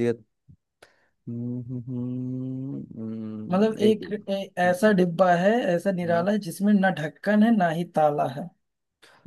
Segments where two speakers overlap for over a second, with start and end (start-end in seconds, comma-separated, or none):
3.5-4.9